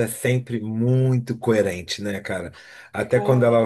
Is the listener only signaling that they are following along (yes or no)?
yes